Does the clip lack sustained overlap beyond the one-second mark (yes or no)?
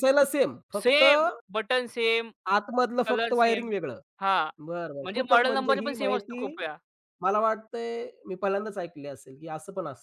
no